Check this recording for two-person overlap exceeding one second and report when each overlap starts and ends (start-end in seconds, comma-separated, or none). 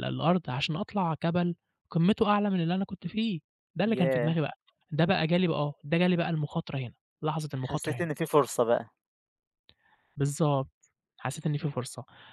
none